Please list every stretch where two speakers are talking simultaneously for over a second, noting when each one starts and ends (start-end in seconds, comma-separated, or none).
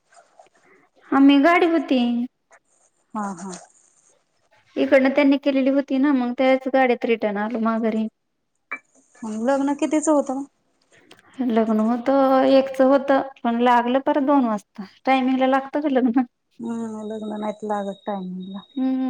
none